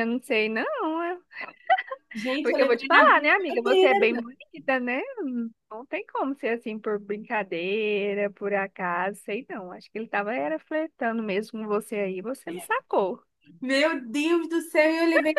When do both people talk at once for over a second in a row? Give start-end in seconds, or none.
2.4-4.0